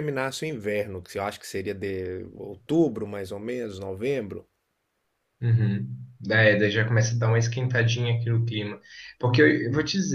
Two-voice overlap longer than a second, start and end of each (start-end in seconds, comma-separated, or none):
none